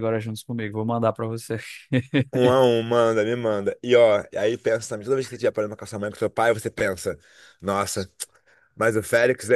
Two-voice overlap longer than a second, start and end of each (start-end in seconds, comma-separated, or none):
none